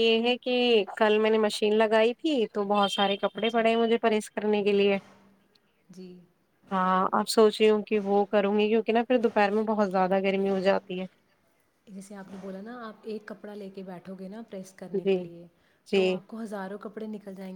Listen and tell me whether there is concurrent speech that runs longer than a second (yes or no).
no